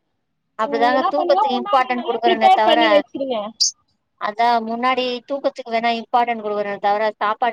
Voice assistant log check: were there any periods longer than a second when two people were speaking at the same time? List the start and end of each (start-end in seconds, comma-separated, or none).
0.7-2.8